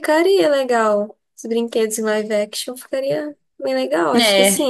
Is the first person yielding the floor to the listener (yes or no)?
yes